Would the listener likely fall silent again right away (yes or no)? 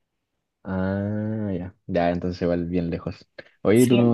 yes